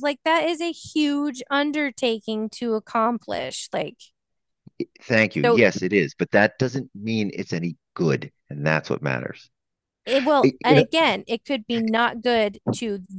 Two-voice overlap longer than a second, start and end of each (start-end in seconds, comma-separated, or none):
none